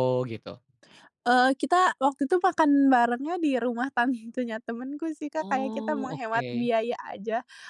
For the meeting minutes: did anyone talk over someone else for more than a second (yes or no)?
yes